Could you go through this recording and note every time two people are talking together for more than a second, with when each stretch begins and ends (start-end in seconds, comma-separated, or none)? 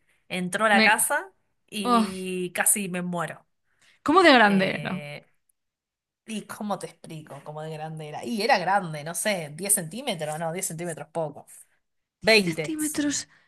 none